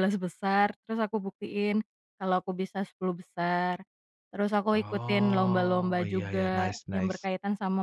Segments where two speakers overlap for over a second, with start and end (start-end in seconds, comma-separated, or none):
4.7-7.2